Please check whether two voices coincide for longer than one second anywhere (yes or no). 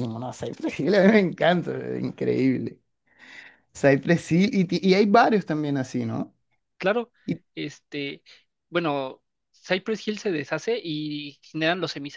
no